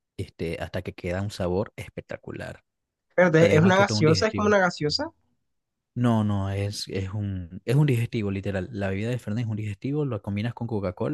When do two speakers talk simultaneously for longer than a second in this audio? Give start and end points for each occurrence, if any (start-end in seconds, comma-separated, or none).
3.4-4.6